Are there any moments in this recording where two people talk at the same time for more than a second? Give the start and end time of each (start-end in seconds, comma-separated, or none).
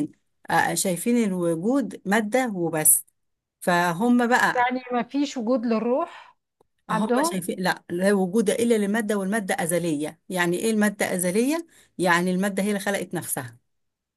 none